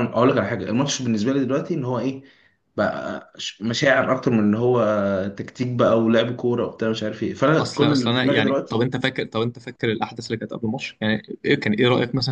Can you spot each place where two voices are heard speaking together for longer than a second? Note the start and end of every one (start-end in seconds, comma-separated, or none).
7.6-8.9